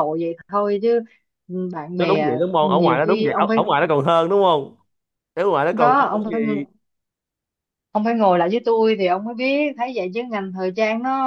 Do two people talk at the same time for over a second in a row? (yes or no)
yes